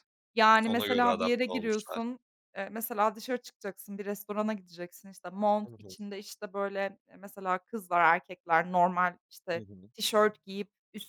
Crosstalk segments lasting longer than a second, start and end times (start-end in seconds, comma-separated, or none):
0.7-2.0